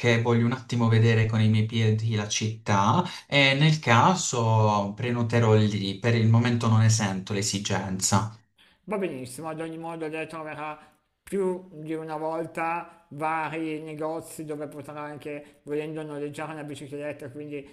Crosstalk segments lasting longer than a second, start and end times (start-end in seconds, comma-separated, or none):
none